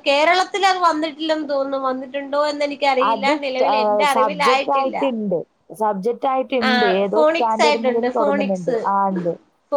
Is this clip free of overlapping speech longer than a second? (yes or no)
no